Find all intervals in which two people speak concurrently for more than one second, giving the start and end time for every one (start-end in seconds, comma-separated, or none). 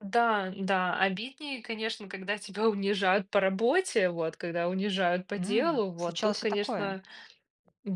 5.3-7.0